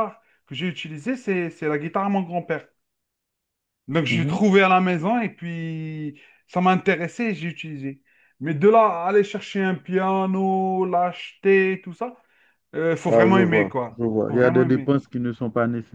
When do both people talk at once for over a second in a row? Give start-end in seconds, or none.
13.1-14.9